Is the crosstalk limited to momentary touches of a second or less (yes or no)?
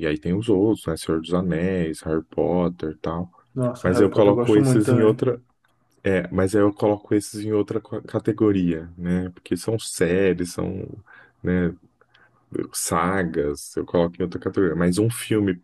no